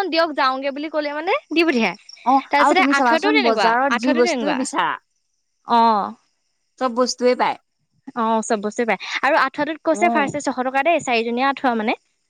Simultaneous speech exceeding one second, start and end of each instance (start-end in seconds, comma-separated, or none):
2.3-4.6